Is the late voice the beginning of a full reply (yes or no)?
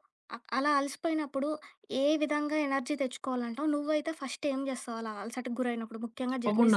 yes